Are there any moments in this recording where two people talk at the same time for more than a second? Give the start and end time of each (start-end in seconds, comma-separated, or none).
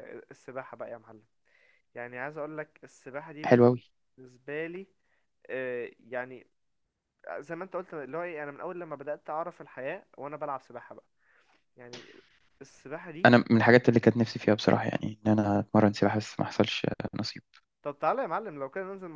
none